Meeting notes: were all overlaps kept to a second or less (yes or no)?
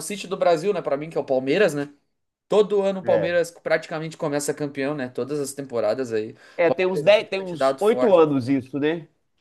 no